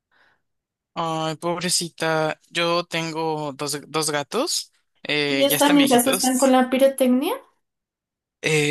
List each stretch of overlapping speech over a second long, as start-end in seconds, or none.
5.3-6.6